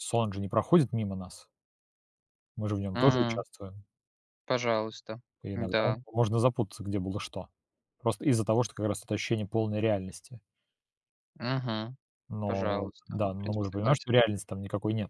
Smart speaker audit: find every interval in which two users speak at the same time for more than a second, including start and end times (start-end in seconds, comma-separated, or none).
12.5-14.2